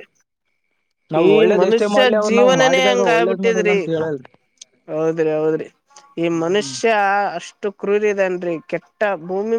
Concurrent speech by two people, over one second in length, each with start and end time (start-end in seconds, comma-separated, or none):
1.3-3.8